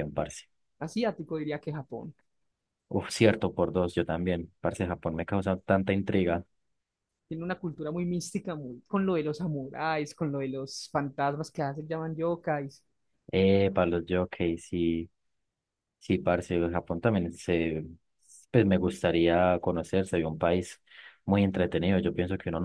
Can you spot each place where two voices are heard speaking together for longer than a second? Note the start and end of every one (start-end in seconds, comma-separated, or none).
none